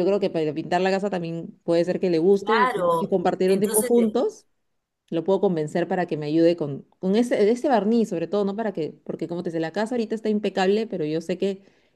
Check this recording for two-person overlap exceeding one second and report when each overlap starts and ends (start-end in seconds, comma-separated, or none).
2.4-3.9